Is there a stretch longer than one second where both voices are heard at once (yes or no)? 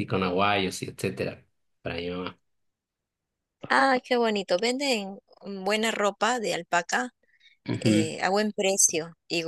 no